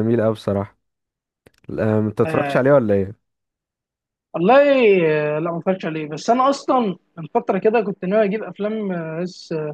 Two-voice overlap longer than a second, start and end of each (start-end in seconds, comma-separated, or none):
none